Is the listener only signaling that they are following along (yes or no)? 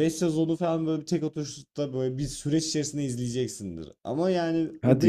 yes